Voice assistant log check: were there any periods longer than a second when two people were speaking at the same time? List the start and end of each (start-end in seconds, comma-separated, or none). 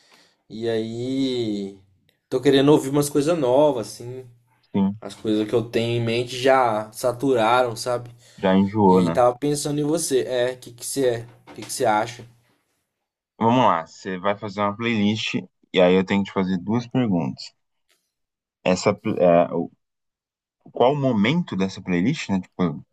none